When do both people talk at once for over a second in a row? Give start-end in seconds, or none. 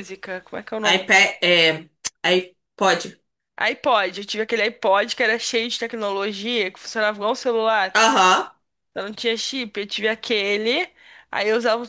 none